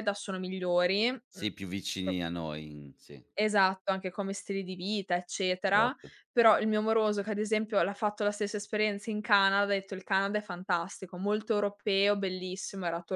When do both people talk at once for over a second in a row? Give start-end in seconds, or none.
none